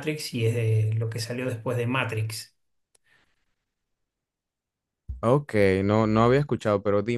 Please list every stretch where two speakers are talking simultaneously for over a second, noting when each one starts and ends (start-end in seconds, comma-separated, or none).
none